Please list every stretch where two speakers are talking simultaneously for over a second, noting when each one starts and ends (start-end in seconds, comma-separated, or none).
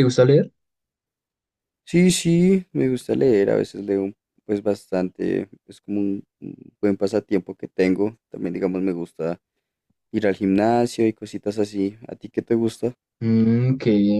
none